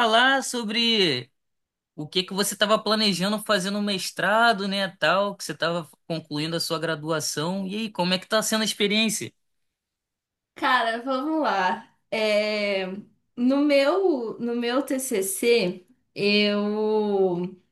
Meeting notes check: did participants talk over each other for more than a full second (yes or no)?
no